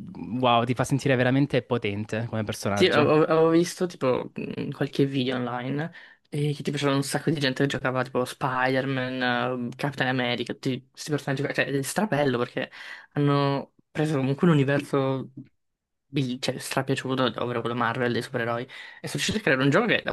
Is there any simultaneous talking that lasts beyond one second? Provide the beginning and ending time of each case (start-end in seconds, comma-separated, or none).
none